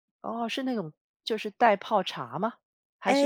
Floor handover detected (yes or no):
yes